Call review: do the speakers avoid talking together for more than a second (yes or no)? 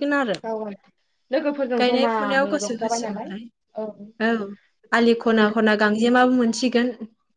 no